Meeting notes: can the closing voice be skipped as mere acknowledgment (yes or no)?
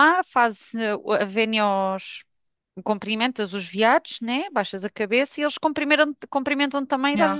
no